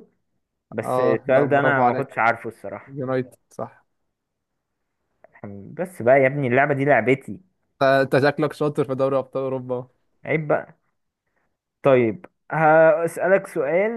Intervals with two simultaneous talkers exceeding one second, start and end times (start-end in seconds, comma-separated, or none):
0.8-2.2